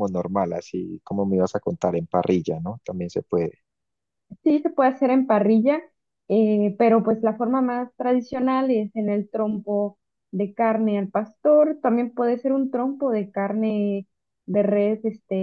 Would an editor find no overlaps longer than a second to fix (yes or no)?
yes